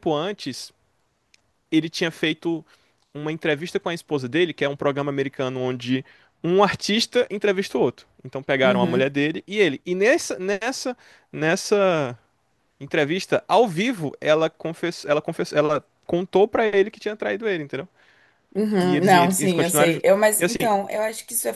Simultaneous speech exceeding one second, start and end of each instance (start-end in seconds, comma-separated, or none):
18.8-20.7